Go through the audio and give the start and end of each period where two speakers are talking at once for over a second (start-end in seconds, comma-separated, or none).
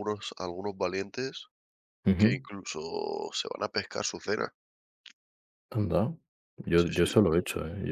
none